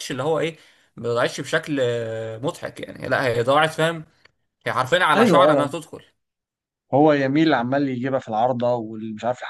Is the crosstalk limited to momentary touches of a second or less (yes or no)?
yes